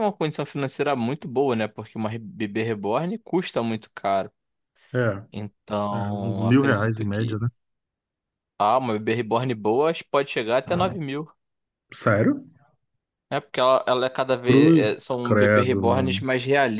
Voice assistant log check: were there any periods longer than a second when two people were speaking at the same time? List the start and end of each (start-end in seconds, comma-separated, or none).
5.9-7.4, 14.4-16.2